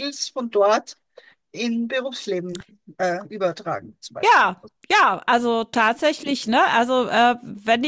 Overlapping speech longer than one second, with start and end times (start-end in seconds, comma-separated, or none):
none